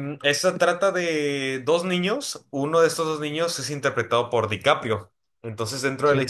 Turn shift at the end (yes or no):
no